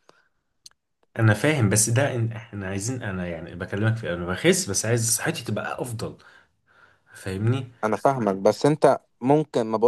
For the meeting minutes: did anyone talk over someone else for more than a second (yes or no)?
no